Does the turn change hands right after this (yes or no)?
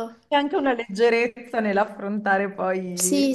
yes